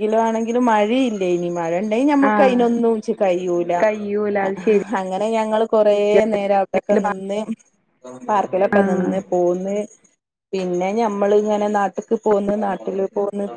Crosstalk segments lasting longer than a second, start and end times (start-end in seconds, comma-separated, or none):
none